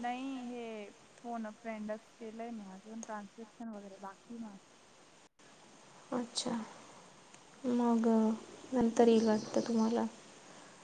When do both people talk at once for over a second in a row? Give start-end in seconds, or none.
none